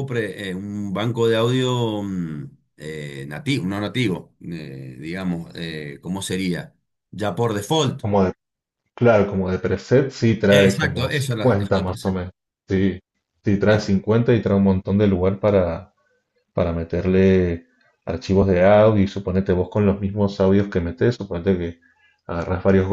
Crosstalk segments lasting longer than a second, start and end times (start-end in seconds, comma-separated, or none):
10.5-12.1